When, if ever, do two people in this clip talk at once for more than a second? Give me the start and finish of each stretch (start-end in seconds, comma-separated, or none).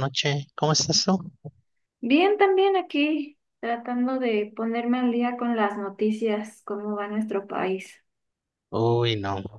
none